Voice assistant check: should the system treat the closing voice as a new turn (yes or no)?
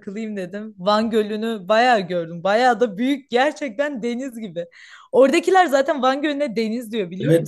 yes